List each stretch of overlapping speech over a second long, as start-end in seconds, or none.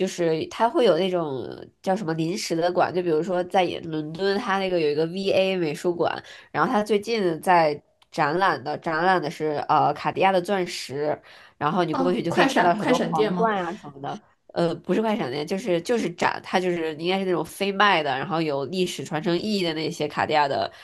11.9-13.5